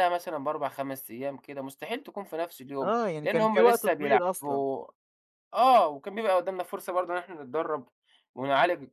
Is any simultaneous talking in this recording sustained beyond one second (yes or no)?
yes